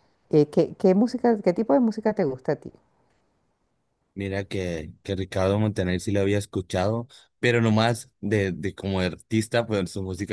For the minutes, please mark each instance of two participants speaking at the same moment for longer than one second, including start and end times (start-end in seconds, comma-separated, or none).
none